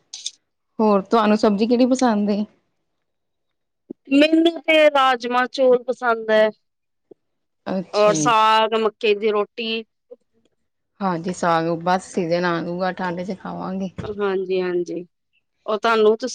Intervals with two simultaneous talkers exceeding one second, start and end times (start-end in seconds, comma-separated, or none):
none